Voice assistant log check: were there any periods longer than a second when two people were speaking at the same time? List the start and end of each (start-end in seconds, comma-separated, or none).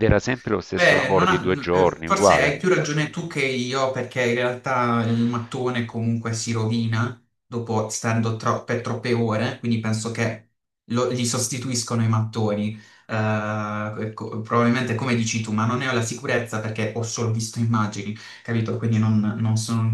0.7-2.5